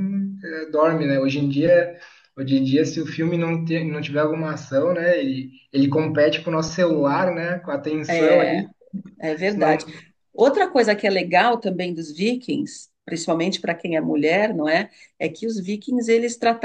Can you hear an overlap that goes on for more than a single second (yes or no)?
no